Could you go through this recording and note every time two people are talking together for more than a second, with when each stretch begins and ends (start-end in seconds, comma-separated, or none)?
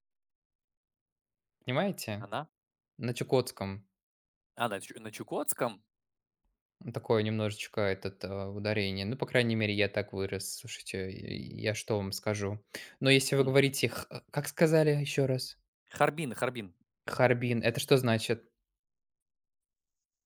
none